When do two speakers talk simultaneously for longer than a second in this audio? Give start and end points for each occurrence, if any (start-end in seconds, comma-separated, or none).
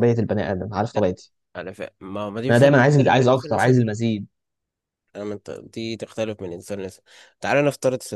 2.5-3.8